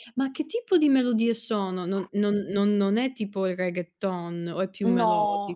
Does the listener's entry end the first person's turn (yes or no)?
yes